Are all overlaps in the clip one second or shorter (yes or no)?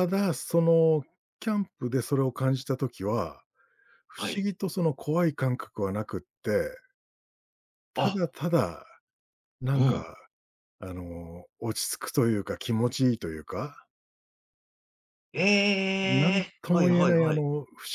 no